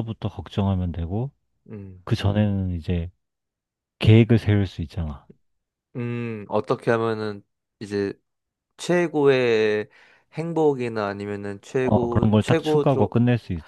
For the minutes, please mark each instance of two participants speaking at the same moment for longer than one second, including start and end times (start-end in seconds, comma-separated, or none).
11.8-13.1